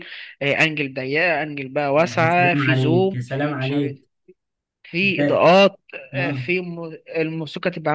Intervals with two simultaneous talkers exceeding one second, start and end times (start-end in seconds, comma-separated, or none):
2.2-4.0